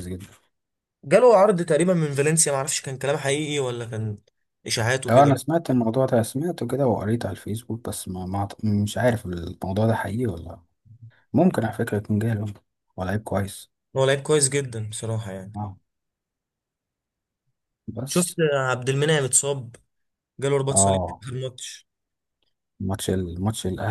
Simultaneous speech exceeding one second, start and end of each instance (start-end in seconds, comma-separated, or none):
none